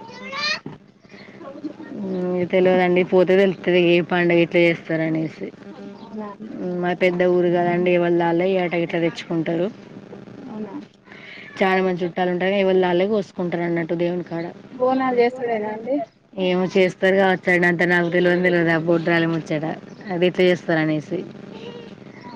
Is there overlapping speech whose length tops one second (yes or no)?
no